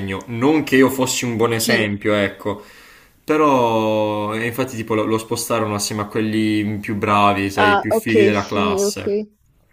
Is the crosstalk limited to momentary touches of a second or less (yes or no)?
no